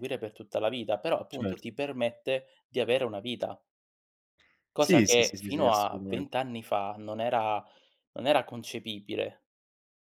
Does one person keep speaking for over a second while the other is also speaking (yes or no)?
yes